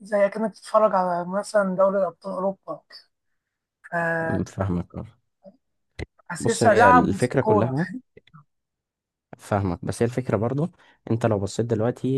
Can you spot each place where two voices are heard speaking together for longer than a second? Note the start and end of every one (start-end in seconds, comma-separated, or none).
6.7-7.9